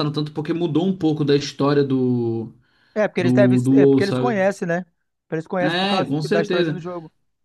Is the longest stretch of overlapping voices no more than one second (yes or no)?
no